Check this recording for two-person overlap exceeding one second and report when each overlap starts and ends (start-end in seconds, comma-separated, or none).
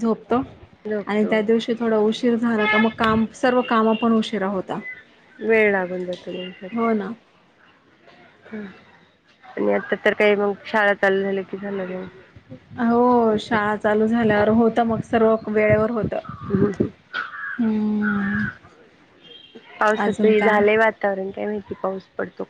none